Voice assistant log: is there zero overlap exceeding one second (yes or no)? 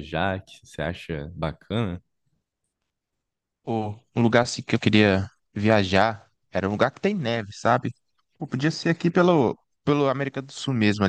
yes